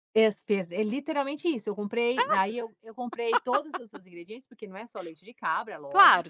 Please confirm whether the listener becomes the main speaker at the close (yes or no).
yes